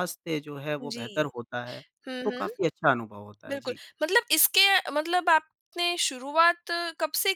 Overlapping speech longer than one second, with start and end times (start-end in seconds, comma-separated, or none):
none